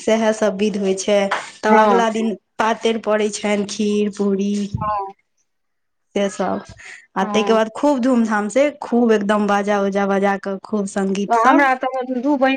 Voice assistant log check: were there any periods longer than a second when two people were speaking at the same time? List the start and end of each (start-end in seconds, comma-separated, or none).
none